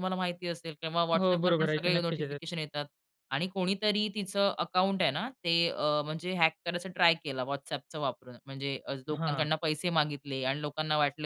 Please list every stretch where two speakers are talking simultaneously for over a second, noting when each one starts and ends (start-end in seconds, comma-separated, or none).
1.2-2.4